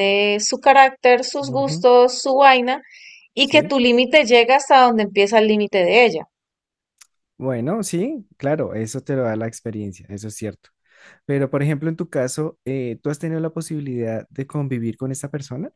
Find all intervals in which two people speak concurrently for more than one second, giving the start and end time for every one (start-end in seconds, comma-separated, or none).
none